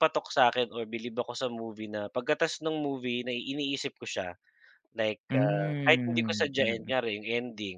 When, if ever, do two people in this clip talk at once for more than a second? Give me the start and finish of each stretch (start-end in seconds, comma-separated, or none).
5.3-6.9